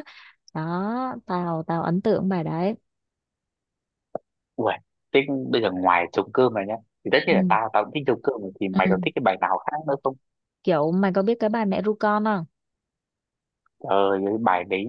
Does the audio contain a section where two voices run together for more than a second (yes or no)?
no